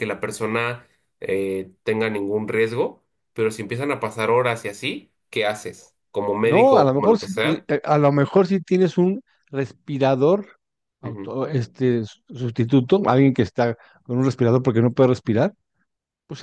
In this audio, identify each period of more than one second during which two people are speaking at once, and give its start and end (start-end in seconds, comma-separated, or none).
6.4-7.7